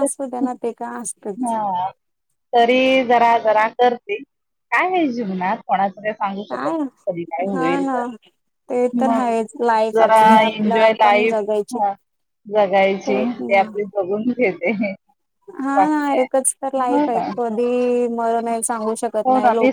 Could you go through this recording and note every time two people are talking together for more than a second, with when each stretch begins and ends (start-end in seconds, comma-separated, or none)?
10.0-11.4